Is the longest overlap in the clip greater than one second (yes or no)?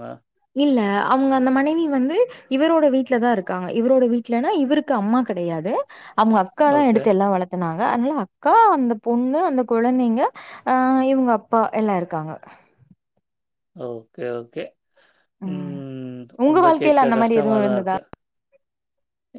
yes